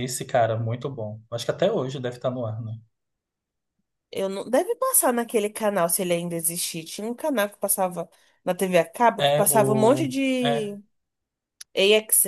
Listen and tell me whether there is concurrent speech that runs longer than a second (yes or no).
yes